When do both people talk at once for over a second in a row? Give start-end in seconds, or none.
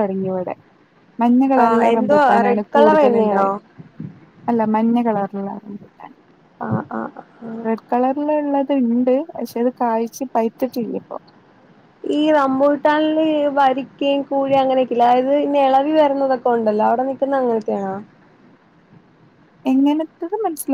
1.6-3.5